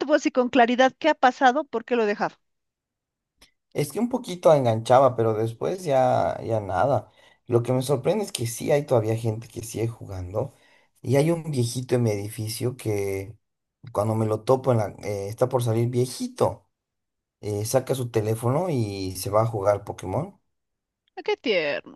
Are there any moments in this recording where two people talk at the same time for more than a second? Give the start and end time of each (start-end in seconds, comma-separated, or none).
none